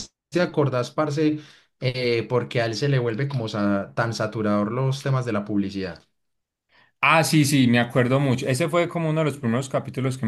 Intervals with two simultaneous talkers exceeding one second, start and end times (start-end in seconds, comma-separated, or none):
none